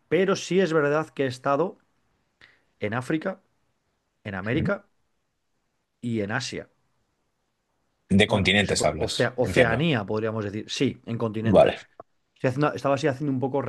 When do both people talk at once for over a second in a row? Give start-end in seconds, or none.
8.3-9.9